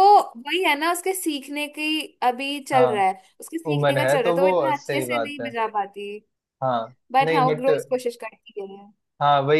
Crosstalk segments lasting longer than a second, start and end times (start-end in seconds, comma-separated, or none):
3.7-5.5